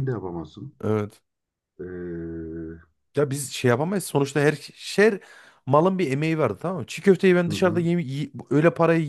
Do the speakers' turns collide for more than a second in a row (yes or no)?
no